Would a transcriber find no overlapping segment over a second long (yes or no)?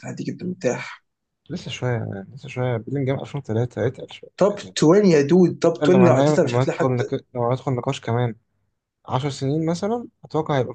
no